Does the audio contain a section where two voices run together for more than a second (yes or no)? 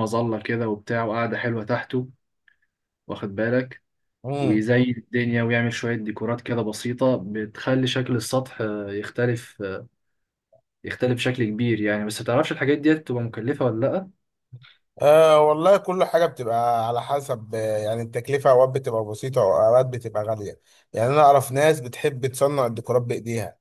no